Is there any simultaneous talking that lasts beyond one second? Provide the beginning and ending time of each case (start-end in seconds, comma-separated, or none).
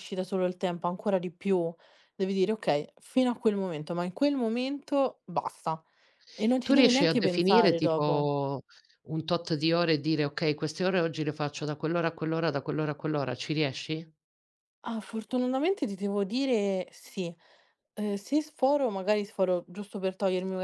6.6-8.3